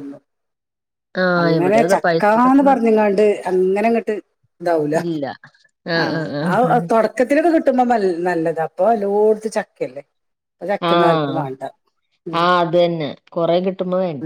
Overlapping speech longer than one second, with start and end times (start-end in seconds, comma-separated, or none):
1.4-2.8